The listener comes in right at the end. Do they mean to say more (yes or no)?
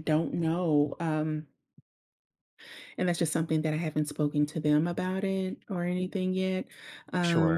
yes